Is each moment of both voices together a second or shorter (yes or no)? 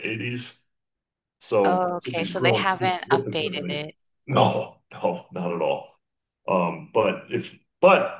no